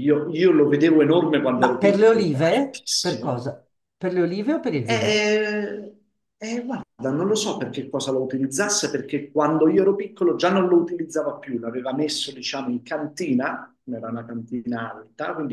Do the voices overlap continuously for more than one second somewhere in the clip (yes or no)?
yes